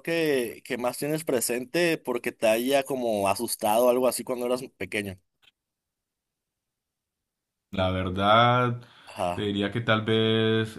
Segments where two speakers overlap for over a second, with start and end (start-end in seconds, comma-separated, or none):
none